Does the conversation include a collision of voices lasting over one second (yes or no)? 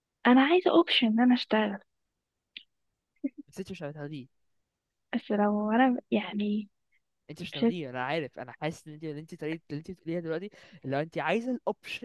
no